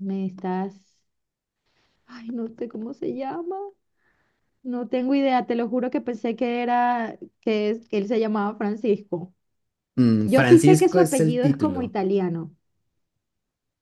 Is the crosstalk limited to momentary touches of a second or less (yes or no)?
no